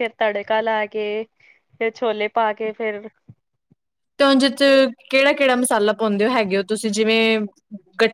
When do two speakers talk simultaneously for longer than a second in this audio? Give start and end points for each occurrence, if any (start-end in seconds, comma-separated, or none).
none